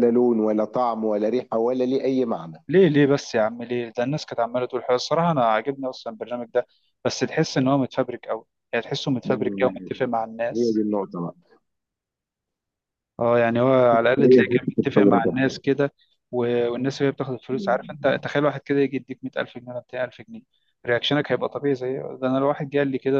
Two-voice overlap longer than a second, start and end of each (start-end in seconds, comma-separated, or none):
14.2-15.5